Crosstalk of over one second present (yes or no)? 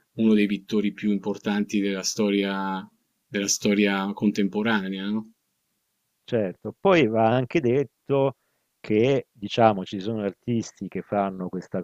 no